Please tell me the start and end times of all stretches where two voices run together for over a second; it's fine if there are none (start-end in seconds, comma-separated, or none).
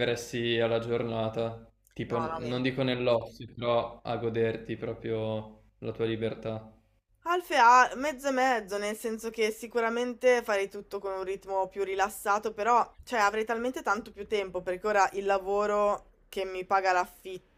none